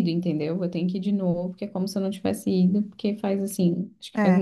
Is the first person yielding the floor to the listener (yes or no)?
yes